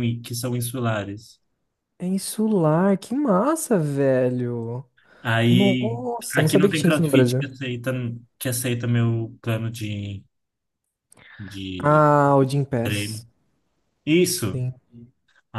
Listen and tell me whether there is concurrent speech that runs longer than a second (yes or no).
yes